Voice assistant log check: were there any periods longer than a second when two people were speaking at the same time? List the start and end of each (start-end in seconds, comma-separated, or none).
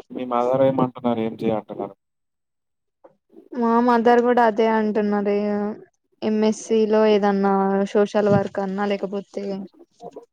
none